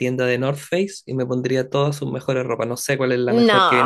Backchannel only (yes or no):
yes